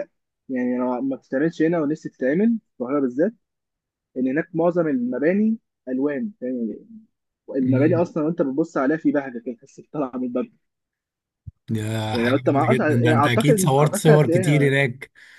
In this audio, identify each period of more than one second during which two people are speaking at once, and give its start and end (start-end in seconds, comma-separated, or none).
12.1-14.7